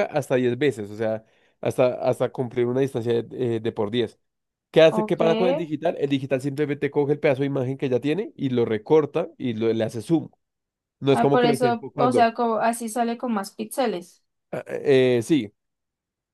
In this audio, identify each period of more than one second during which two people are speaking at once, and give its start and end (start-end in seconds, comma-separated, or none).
11.1-12.3